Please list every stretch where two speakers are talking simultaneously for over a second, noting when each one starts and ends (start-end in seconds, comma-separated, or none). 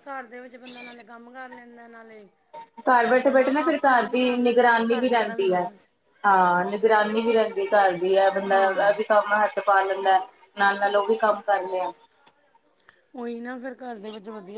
3.1-5.6